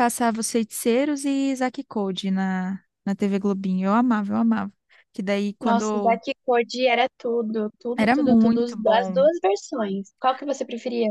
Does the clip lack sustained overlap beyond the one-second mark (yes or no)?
no